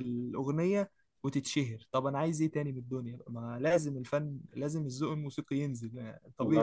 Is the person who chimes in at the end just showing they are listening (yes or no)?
no